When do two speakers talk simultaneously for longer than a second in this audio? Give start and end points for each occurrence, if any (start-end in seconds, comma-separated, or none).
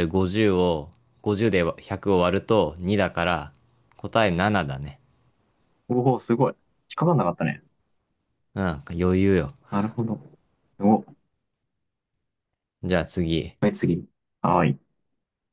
none